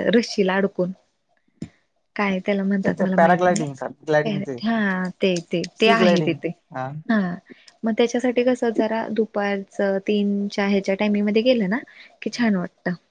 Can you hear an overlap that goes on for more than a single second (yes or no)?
yes